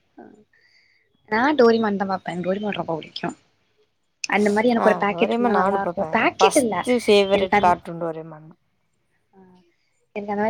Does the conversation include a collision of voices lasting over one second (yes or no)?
yes